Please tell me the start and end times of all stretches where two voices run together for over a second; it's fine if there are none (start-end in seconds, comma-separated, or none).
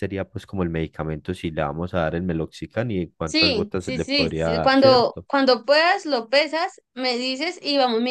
3.2-5.3